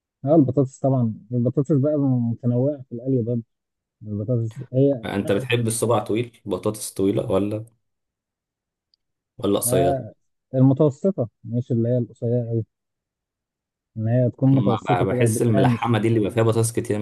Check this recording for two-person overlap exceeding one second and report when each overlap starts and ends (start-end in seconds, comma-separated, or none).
14.5-16.0